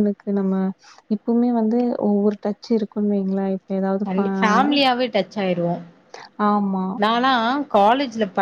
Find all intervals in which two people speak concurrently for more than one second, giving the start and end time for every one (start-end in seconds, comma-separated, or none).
none